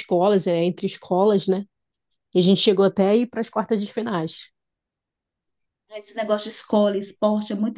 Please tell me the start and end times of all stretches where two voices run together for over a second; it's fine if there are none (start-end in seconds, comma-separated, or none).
none